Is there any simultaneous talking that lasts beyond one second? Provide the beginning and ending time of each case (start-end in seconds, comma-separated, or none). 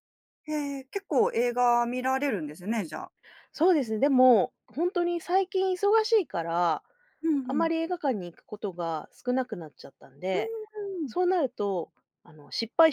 none